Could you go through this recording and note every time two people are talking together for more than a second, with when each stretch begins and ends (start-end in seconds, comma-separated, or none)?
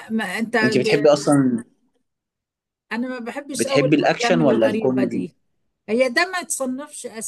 3.5-5.3